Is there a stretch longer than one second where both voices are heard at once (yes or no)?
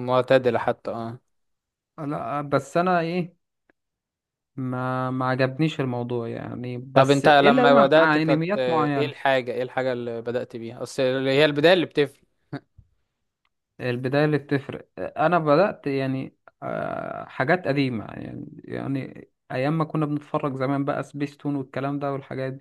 yes